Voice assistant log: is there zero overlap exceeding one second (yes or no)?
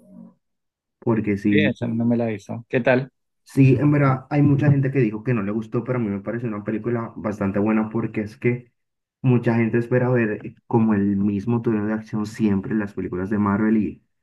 yes